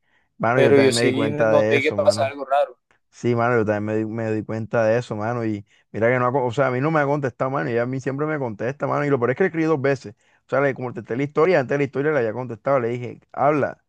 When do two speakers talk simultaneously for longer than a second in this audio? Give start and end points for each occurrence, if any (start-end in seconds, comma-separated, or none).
0.5-2.4